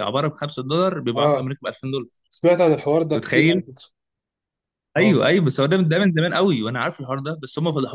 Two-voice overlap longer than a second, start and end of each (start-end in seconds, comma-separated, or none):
none